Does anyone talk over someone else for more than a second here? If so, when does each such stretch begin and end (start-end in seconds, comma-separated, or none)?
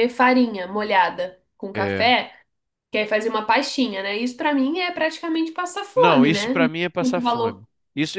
5.9-7.6